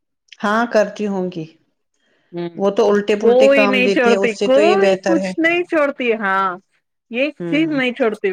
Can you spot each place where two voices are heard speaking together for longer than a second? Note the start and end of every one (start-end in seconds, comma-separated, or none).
3.2-5.3